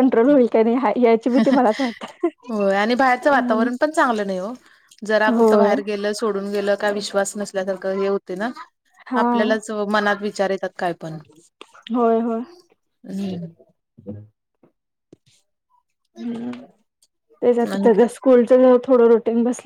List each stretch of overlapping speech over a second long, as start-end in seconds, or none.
none